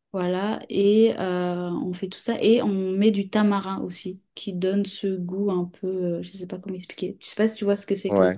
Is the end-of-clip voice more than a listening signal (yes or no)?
yes